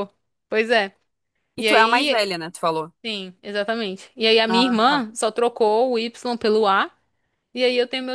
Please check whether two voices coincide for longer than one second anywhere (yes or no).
no